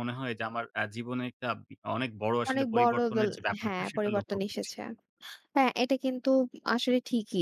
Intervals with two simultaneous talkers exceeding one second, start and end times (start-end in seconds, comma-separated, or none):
2.5-4.7